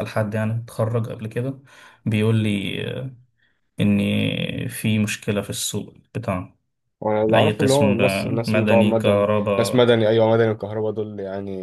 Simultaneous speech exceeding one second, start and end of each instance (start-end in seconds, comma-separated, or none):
7.3-9.9